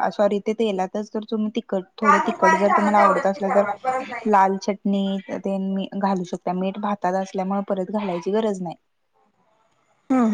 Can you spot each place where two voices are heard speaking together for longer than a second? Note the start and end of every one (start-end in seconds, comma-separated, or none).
2.0-3.6